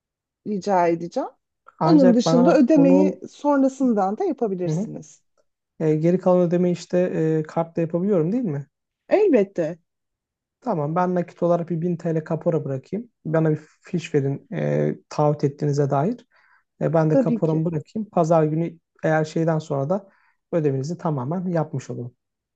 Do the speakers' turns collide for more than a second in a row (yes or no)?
yes